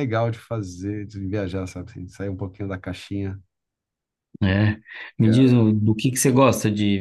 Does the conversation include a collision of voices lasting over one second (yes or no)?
no